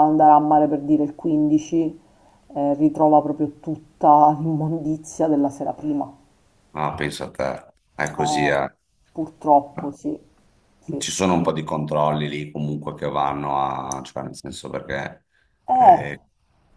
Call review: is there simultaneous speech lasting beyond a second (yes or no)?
no